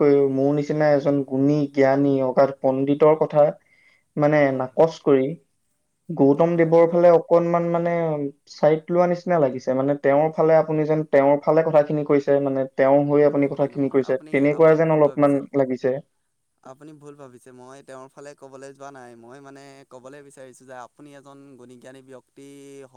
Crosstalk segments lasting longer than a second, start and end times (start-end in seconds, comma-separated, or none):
13.4-15.4